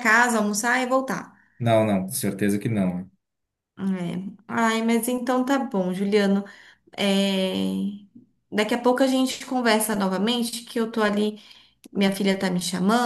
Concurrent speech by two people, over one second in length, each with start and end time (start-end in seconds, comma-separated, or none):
none